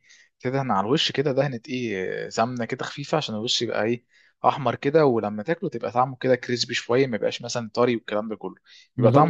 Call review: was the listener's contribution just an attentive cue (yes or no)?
no